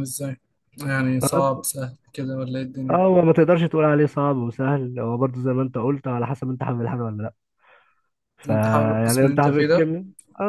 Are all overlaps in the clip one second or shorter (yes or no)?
no